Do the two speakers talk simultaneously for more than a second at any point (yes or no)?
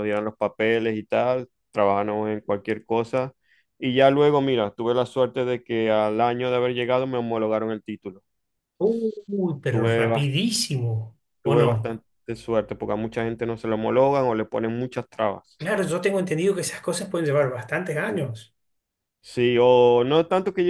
no